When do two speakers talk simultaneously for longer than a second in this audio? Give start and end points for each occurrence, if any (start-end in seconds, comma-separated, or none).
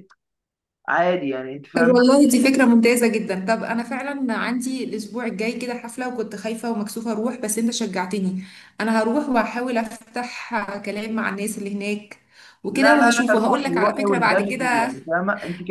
12.7-14.9